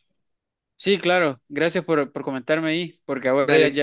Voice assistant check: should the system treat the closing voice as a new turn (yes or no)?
no